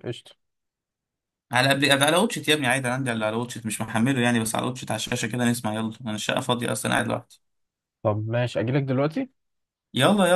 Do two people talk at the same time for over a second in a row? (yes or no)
no